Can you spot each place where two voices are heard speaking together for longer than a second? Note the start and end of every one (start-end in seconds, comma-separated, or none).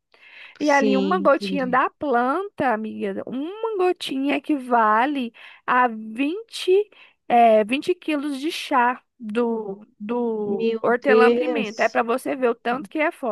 0.6-1.9, 10.4-12.0